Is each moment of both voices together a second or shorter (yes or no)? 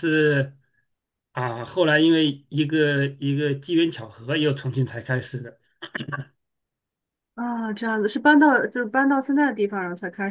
yes